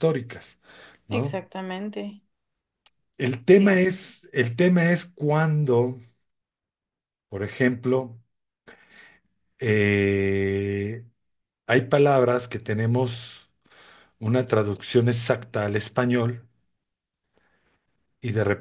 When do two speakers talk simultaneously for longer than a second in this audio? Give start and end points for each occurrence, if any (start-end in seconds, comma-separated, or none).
none